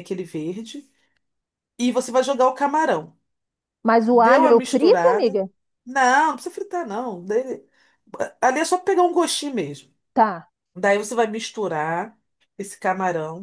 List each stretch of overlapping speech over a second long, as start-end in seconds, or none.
4.1-5.4